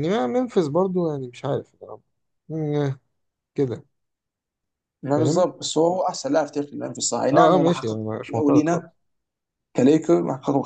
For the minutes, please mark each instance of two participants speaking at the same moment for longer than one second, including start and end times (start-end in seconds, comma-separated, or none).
7.3-8.8